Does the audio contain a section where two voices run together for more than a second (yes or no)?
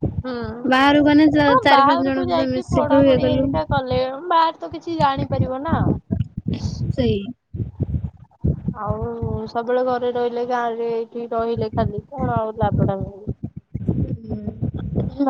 yes